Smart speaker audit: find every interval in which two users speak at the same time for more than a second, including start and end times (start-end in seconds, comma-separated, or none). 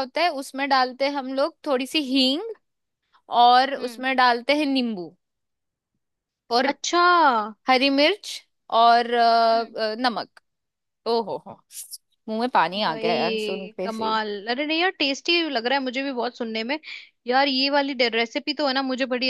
12.9-14.1